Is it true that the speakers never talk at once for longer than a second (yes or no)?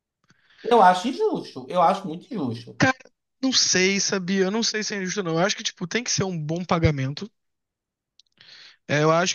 yes